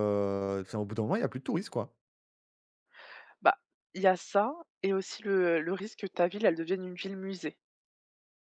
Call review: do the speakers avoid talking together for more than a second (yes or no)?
yes